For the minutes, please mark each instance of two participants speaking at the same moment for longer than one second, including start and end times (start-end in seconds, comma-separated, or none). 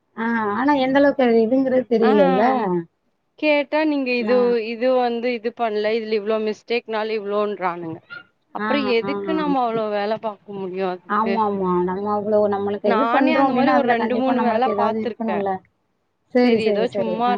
12.9-15.4